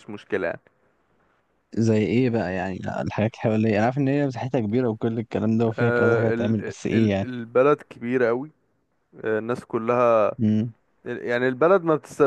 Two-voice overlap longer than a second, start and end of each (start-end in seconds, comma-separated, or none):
5.7-7.3